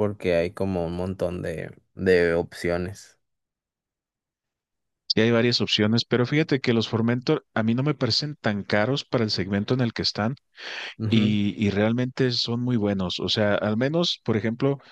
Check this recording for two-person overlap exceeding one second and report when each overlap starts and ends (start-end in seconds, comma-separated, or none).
none